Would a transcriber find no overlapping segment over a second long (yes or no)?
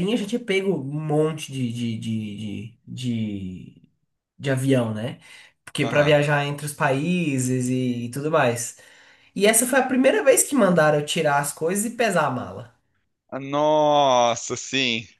yes